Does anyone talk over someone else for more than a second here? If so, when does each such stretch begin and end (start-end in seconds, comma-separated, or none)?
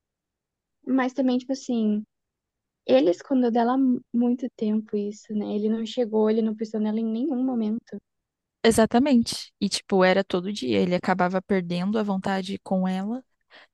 none